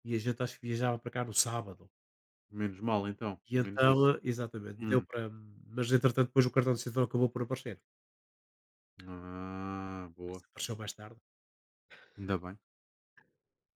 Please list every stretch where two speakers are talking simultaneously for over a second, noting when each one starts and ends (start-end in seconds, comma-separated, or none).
none